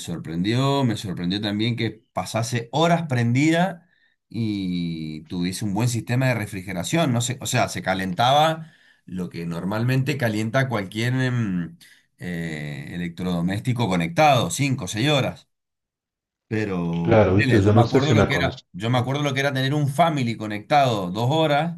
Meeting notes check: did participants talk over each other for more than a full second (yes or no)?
yes